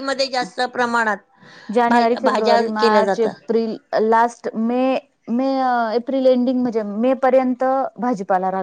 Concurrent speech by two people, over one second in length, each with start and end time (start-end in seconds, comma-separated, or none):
1.9-3.4